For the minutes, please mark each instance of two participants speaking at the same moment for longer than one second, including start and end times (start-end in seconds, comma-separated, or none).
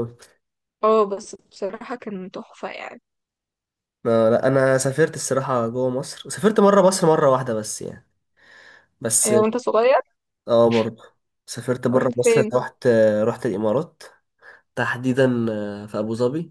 none